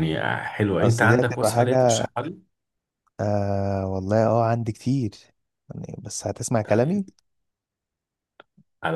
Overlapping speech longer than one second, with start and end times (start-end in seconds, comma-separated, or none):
0.8-2.1